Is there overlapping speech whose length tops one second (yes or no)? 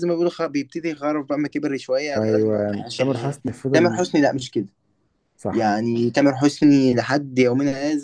yes